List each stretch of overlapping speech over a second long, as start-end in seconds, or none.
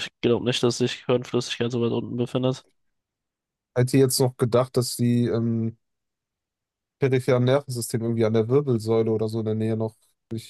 none